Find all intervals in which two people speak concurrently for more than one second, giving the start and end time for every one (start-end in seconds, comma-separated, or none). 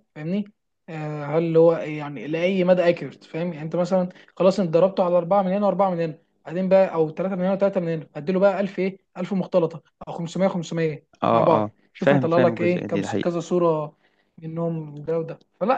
11.2-13.3